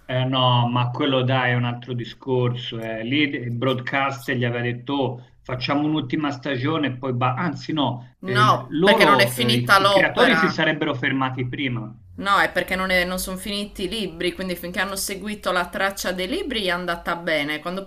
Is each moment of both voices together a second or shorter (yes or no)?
no